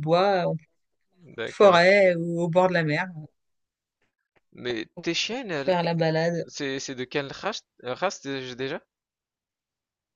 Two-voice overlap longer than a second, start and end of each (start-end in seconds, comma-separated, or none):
none